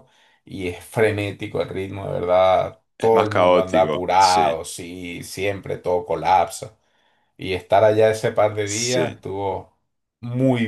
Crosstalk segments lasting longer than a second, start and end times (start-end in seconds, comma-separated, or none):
3.0-4.6